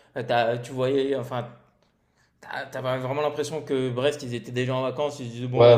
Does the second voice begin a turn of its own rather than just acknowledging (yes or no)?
yes